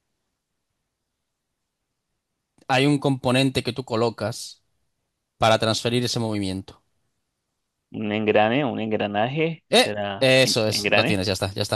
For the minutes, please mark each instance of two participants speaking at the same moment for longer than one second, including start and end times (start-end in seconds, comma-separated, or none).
9.7-11.2